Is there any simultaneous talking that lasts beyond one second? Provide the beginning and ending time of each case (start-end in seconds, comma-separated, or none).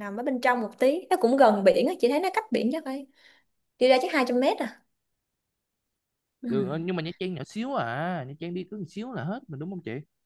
none